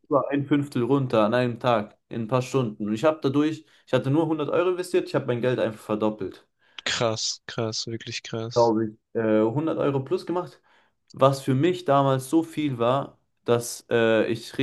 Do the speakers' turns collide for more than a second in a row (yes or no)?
no